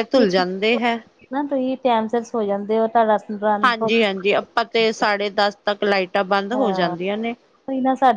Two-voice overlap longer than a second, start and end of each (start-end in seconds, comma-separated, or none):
none